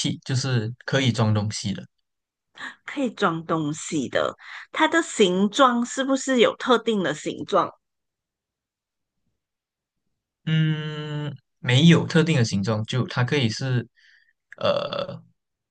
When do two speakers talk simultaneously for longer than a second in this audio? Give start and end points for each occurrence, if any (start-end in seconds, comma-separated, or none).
none